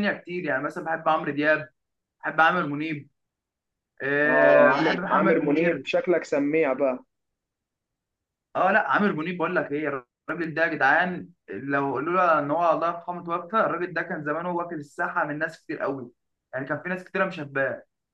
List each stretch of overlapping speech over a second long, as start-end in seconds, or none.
4.2-5.8